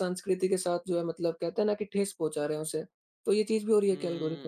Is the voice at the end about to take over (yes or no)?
yes